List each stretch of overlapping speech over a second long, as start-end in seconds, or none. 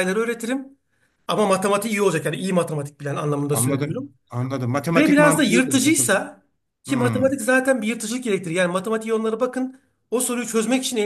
4.9-6.1